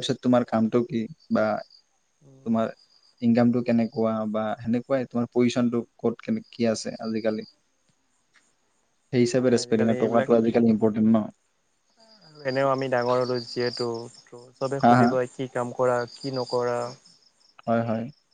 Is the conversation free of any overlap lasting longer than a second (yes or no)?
no